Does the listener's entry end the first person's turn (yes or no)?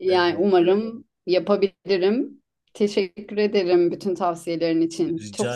yes